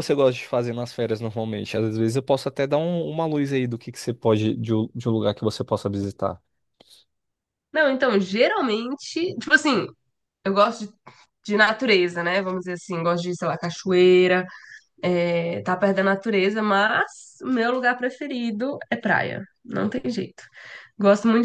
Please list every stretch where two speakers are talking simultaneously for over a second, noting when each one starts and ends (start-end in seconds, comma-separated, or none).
none